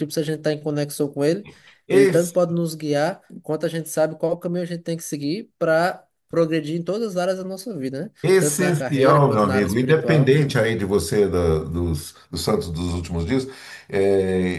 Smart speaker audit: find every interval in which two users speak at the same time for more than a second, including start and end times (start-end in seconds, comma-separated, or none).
8.2-10.3